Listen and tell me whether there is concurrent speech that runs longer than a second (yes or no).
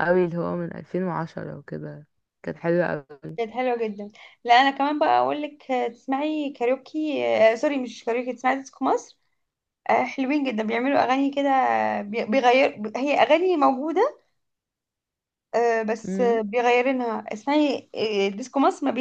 no